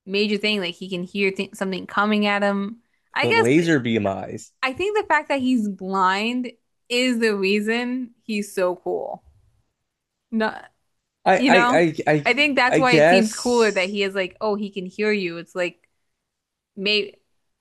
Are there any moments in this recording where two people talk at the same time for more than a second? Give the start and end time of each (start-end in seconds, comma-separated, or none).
12.7-14.0